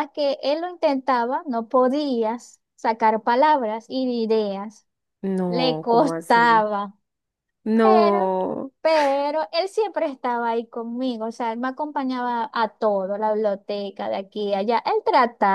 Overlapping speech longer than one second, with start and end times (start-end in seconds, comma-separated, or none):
5.5-6.7